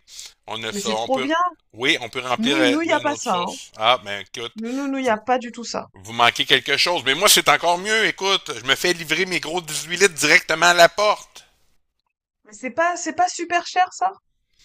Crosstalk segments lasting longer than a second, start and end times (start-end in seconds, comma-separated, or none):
2.4-3.6